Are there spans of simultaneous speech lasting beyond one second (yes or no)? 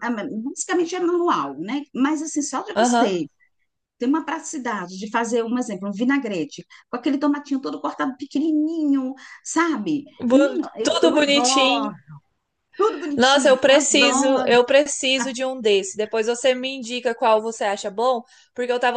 yes